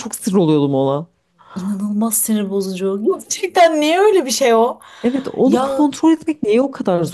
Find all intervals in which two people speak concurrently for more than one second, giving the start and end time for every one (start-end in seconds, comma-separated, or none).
none